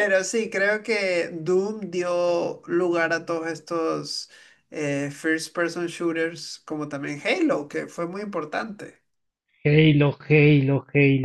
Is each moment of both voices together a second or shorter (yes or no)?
yes